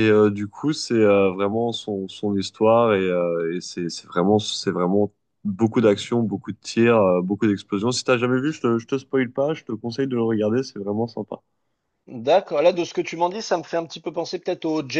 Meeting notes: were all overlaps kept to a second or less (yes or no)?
yes